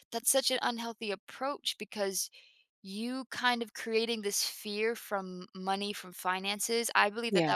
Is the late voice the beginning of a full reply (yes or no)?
no